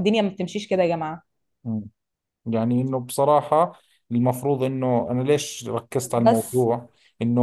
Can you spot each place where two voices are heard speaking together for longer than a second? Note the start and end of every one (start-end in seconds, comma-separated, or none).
none